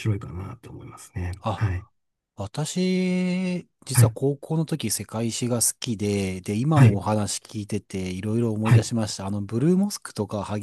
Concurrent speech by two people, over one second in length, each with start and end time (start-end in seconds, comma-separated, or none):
none